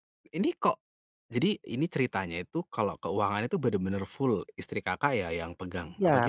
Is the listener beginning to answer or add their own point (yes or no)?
yes